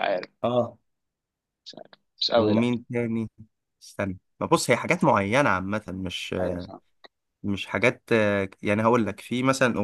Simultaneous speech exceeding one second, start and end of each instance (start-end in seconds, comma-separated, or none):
none